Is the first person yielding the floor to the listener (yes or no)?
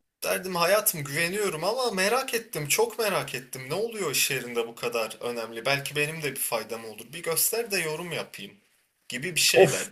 yes